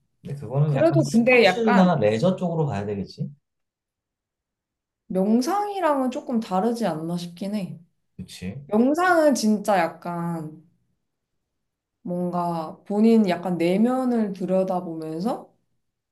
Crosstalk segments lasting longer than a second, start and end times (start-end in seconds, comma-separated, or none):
0.6-2.1